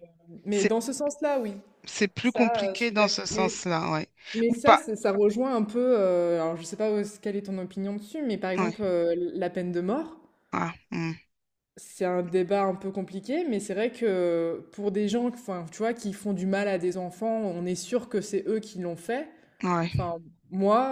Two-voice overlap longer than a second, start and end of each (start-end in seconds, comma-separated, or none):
2.2-3.5